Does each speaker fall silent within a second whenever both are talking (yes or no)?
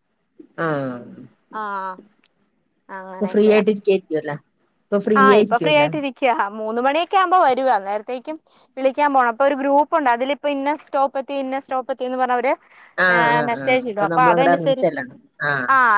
no